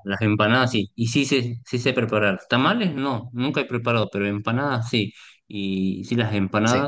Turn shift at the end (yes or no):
no